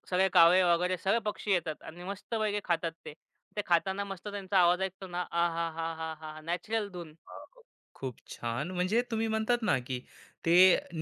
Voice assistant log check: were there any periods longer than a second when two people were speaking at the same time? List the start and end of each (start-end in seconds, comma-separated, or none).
none